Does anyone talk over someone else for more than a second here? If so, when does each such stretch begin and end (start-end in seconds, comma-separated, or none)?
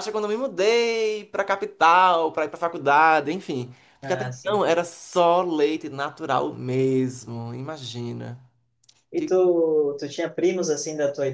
none